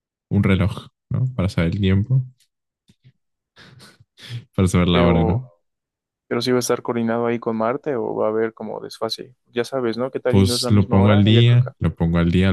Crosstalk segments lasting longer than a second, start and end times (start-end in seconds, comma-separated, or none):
10.3-11.7